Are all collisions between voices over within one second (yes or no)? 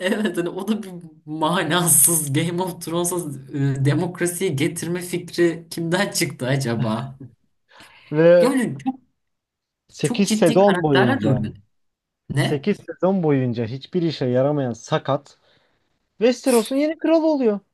no